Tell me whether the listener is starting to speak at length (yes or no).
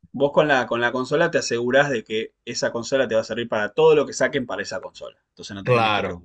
yes